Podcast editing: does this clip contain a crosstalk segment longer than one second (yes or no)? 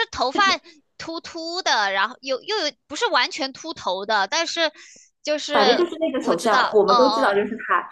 yes